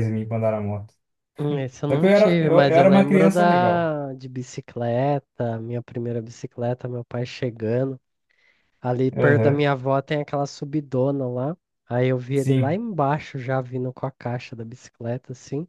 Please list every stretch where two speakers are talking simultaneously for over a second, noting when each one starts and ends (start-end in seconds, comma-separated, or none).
1.9-3.9